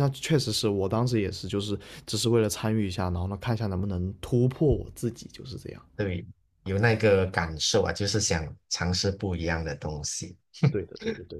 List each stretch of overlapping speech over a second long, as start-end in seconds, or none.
none